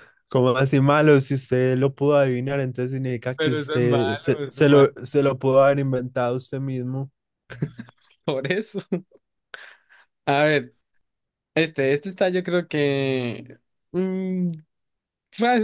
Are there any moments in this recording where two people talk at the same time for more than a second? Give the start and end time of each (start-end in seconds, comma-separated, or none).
3.4-4.9